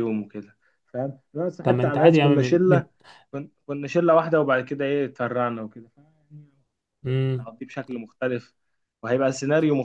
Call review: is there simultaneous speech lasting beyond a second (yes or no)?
yes